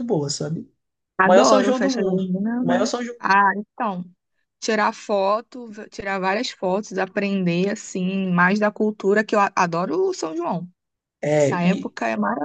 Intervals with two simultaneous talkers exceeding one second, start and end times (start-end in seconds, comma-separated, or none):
1.2-3.2